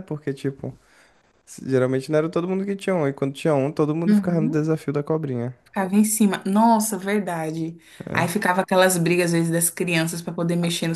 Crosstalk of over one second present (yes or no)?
no